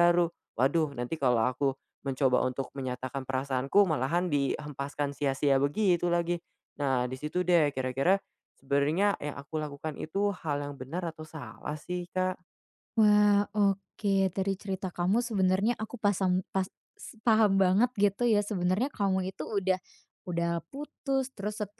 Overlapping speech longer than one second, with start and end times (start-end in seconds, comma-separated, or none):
none